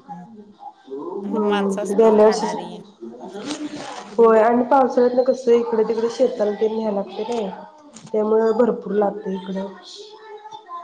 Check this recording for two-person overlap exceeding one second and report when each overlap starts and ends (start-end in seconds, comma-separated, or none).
1.2-2.7